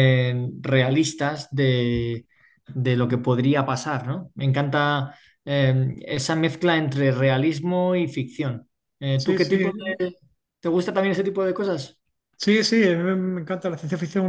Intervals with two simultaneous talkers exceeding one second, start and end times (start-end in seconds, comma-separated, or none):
none